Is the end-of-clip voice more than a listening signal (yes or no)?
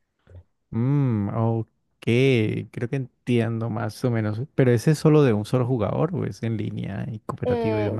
yes